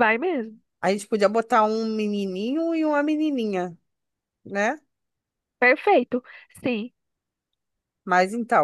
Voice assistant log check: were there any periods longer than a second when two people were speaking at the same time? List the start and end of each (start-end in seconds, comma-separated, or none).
none